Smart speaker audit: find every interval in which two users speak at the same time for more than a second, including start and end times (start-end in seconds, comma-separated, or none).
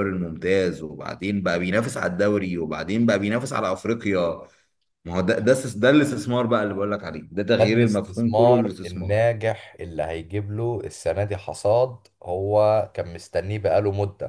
7.6-9.2